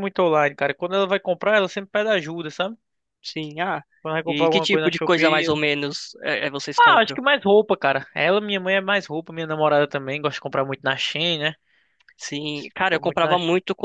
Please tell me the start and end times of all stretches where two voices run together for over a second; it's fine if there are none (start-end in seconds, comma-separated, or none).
4.2-5.5